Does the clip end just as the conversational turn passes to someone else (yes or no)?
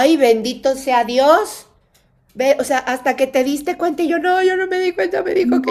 yes